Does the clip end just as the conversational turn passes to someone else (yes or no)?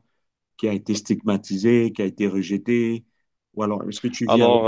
no